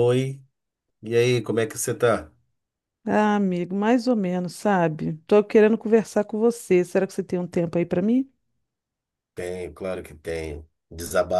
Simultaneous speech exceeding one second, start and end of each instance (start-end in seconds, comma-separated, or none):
none